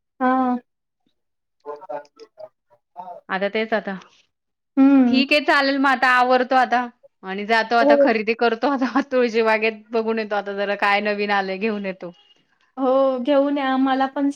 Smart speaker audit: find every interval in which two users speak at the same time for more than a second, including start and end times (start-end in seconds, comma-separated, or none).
none